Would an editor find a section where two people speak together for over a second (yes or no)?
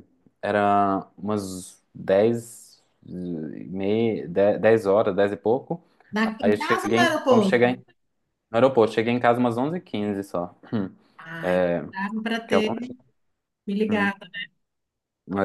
yes